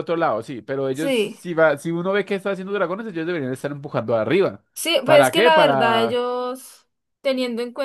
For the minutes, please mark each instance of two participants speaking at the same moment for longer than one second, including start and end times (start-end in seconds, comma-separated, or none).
5.0-6.2